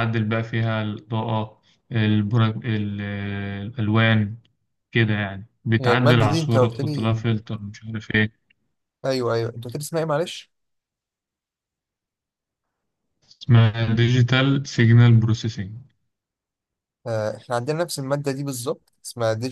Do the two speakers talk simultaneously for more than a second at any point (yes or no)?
yes